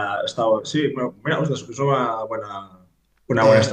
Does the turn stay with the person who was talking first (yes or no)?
yes